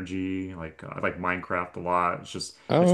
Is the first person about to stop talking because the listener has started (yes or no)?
no